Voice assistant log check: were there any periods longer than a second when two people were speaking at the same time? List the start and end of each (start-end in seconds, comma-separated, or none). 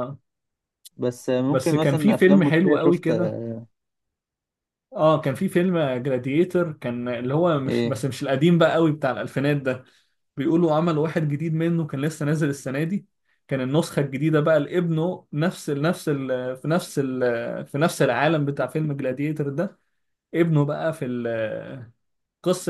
1.5-3.1